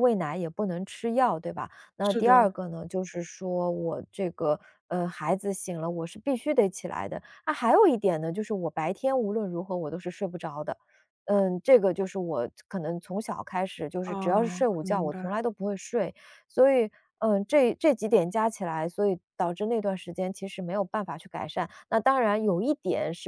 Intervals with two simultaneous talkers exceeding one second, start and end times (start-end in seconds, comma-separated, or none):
14.0-15.3